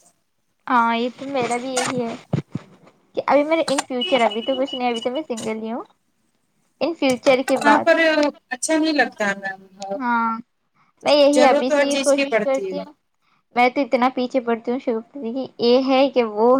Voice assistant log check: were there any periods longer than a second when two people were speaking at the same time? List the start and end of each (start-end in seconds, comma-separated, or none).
11.3-12.8